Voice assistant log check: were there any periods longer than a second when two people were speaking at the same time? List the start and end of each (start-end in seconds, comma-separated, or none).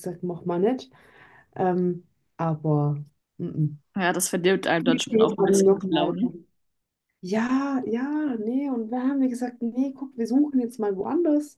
4.8-6.2